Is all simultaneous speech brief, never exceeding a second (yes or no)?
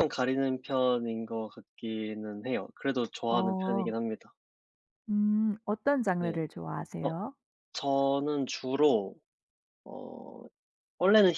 yes